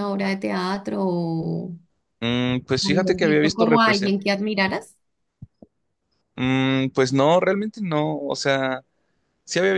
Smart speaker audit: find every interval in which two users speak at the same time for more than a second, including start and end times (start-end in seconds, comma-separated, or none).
2.8-4.1